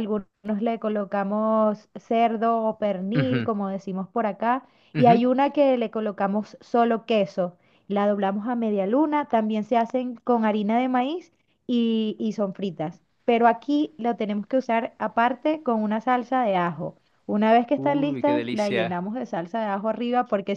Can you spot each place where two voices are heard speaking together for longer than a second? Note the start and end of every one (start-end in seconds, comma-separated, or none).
17.8-19.0